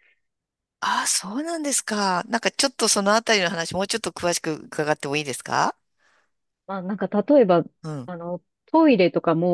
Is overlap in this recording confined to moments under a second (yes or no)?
yes